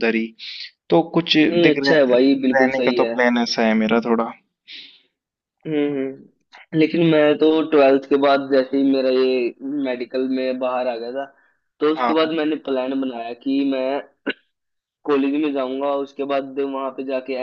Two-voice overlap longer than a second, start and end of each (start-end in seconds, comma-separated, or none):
1.4-3.1